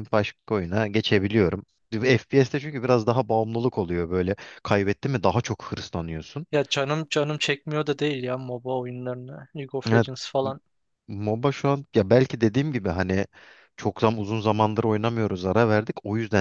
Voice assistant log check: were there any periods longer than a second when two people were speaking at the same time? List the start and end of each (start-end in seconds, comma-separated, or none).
none